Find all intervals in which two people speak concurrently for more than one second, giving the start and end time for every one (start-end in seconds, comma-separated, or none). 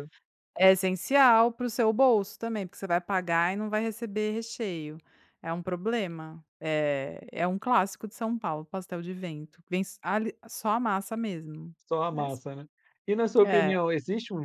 none